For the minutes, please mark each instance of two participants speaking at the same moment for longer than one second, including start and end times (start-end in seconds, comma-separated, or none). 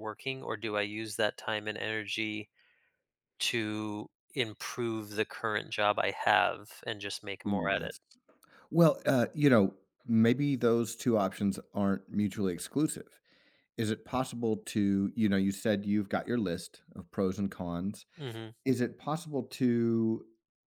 none